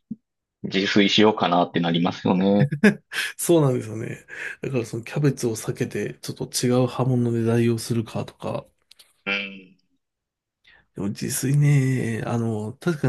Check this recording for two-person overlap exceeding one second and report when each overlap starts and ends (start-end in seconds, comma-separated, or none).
none